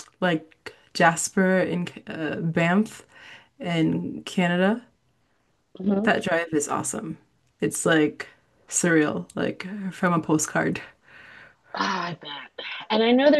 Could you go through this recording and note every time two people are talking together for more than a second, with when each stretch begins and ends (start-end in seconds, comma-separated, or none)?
none